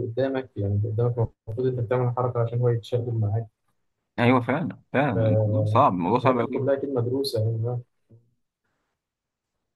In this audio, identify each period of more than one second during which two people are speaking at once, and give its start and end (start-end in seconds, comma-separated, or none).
5.1-6.5